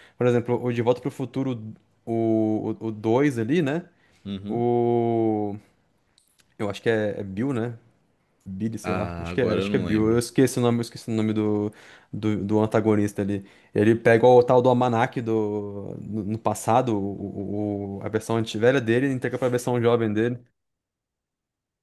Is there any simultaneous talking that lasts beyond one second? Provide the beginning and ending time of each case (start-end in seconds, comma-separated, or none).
8.8-10.2